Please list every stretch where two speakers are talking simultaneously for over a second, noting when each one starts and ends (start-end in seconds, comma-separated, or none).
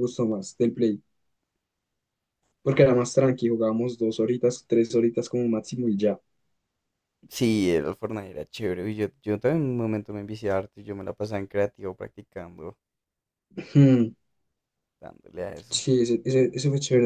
none